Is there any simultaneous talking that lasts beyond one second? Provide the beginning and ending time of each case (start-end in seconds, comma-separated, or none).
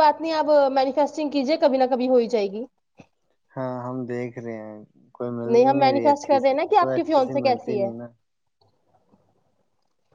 5.7-7.9